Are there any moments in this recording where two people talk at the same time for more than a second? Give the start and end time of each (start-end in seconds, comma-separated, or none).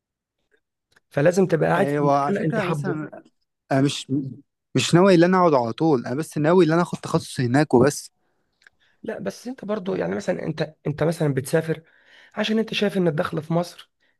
1.8-3.0